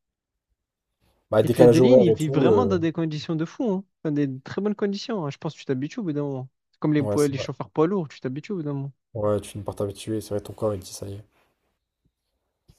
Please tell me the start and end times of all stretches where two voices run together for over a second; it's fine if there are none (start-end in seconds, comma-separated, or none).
1.4-2.8